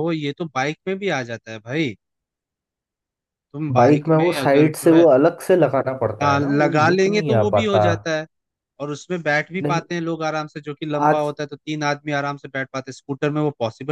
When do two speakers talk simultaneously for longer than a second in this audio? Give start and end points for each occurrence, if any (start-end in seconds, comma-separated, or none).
3.7-5.0, 6.2-7.8